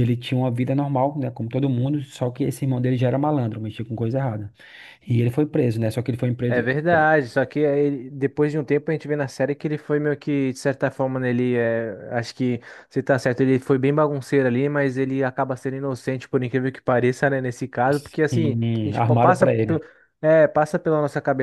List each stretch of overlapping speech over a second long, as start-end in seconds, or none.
18.3-19.8